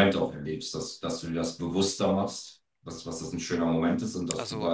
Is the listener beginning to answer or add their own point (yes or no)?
no